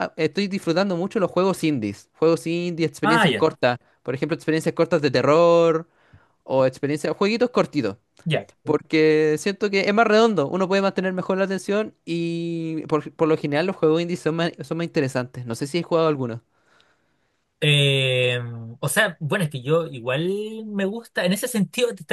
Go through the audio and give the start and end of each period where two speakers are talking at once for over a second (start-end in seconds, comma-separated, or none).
none